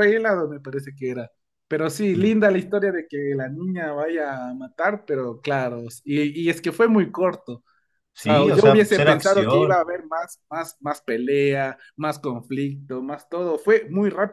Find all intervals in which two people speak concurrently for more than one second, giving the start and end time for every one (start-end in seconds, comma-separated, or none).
8.2-9.8